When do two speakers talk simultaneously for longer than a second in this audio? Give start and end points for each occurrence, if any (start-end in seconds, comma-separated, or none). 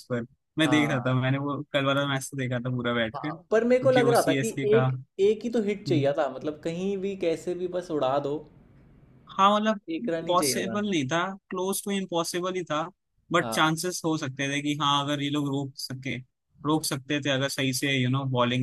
3.1-4.9